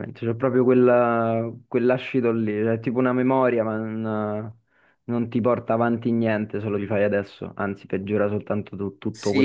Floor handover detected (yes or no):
yes